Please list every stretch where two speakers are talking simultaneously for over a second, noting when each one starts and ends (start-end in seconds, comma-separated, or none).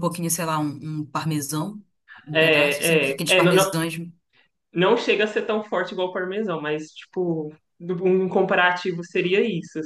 2.3-3.7